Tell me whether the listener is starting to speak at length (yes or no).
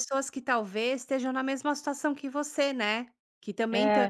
no